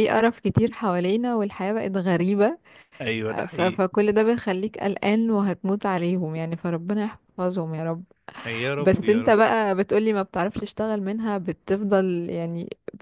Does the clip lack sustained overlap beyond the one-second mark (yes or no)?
yes